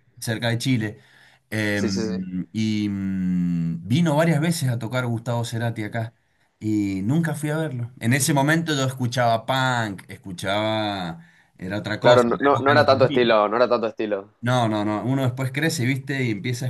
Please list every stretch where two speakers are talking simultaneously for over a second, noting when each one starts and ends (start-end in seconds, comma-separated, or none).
12.0-13.4